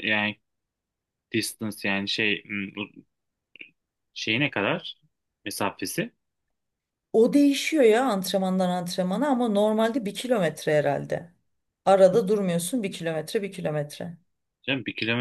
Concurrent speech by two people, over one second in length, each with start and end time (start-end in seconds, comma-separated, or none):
none